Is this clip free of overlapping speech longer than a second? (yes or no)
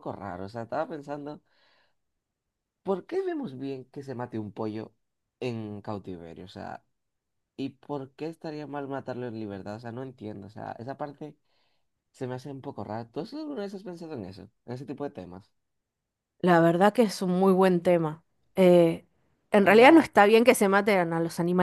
yes